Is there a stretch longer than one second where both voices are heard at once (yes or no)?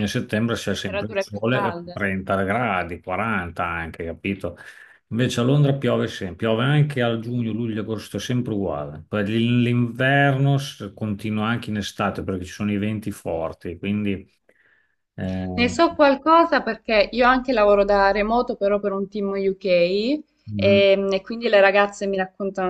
yes